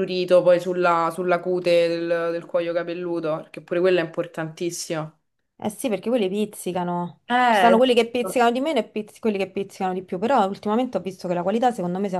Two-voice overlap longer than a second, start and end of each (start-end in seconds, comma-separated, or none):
none